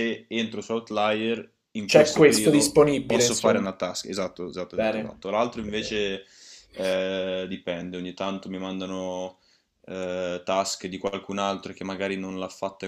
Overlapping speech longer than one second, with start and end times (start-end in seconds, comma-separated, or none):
1.8-3.6